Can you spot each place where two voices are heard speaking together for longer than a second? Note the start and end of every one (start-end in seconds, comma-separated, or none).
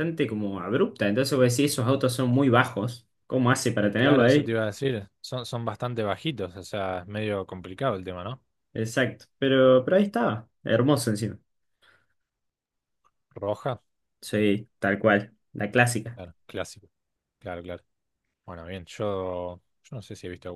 none